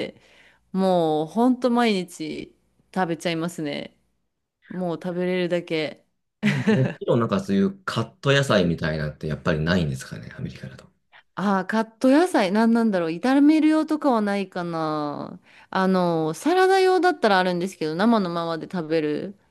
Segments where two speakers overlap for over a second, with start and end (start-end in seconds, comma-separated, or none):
none